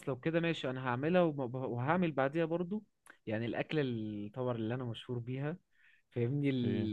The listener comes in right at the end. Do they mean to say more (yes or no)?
no